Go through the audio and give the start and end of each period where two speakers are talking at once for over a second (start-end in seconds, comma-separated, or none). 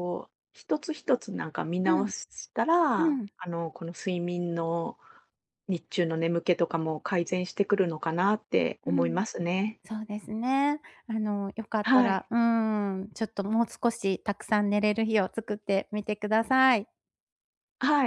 none